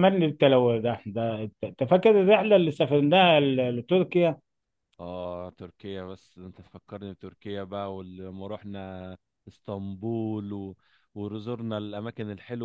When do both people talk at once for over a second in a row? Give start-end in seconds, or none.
none